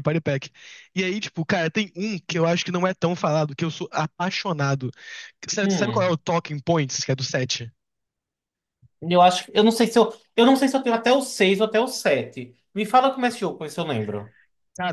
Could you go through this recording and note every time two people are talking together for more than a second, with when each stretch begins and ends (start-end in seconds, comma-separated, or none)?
none